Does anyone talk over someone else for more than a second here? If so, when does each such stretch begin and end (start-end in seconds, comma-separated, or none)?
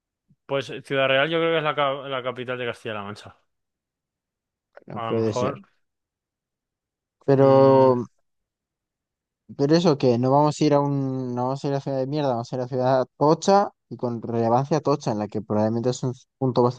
none